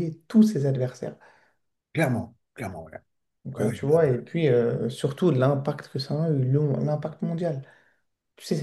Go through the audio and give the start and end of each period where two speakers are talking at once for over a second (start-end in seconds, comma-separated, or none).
none